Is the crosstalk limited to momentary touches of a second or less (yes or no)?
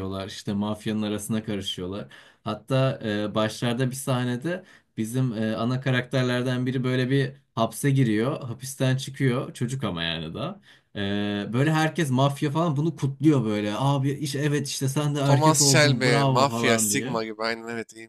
no